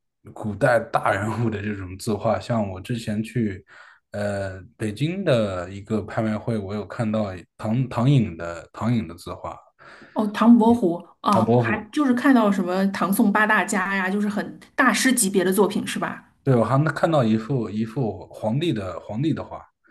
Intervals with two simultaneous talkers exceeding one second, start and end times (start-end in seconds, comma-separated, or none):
none